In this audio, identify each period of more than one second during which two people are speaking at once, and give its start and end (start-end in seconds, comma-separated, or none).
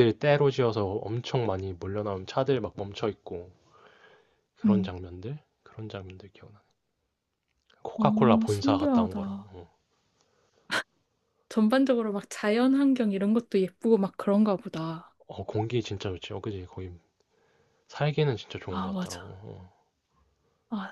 8.0-9.5